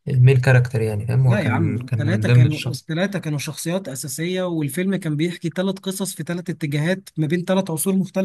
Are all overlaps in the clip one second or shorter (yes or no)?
no